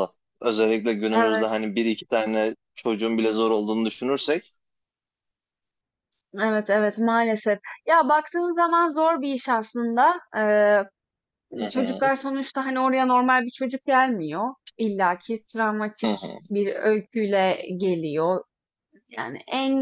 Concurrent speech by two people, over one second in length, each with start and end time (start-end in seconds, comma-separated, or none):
none